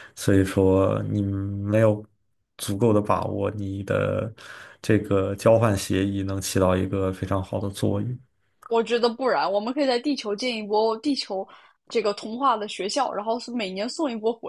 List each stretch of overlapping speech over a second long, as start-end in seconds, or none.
none